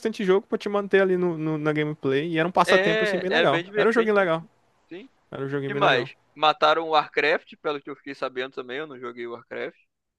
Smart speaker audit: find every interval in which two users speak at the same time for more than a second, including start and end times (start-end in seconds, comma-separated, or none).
2.6-4.5